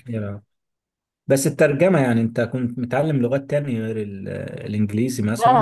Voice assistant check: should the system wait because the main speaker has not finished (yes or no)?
no